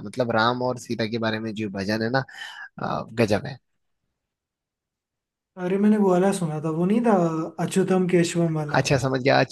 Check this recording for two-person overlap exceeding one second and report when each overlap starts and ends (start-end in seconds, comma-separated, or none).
none